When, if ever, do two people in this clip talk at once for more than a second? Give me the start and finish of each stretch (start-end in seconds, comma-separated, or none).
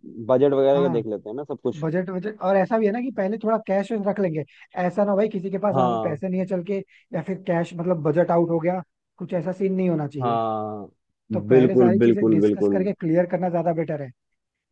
11.5-12.8